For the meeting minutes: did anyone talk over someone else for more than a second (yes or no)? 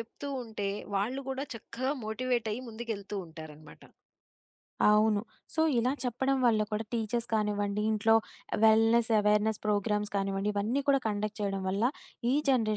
no